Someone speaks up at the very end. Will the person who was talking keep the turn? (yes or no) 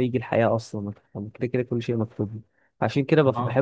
yes